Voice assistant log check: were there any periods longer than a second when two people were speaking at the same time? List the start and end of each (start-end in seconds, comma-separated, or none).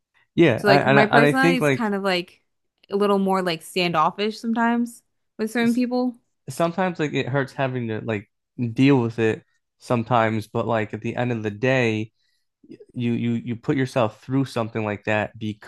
0.6-1.9